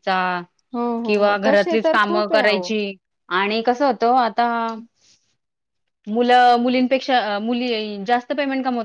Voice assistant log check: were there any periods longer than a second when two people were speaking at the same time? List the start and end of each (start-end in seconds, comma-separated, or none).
1.1-2.7